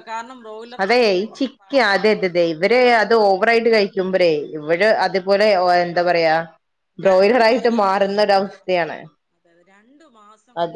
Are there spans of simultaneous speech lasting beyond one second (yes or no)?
no